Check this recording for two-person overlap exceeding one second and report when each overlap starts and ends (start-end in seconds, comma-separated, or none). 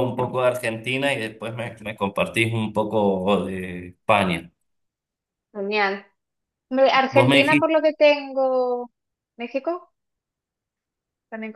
none